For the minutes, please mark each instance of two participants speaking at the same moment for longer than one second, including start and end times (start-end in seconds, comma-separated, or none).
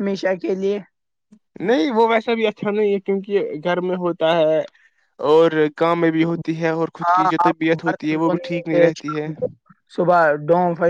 7.0-9.3